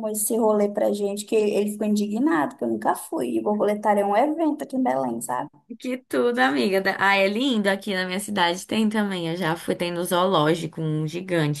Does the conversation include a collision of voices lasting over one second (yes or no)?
no